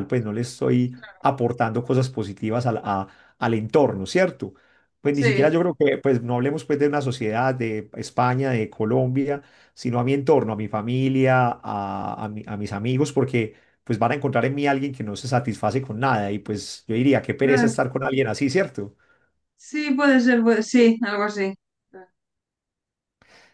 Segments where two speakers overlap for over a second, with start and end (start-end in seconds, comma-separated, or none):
none